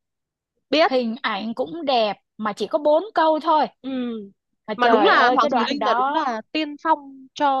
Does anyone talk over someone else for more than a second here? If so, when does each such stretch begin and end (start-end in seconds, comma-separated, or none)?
4.8-6.3